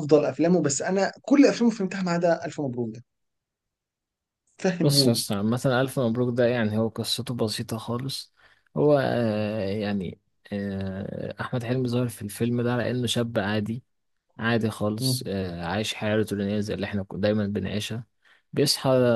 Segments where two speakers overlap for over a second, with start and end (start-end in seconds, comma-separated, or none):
none